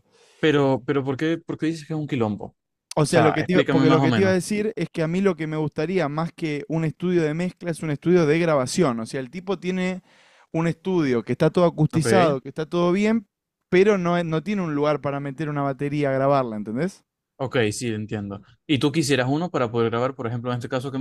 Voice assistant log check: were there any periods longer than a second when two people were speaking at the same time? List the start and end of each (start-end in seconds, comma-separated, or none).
3.1-4.4